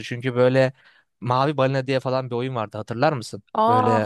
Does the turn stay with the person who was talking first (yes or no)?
no